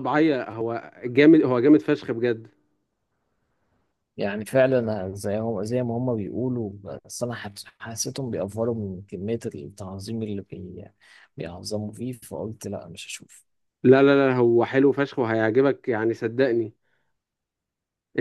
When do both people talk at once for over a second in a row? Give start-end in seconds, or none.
none